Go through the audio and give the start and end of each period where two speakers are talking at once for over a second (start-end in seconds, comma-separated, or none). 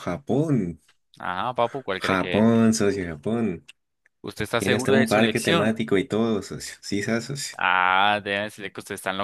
4.6-5.8